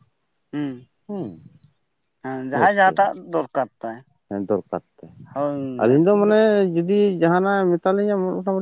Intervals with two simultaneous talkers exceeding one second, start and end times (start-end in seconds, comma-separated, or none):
none